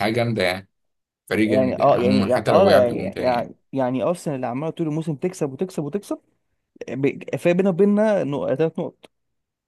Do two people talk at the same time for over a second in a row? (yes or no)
yes